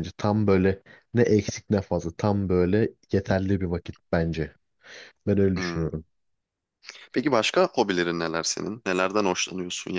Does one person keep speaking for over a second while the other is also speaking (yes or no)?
no